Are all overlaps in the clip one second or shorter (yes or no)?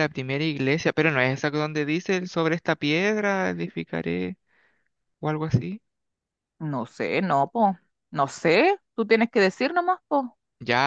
yes